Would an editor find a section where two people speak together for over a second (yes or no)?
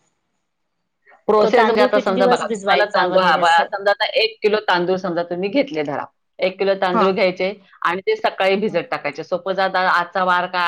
yes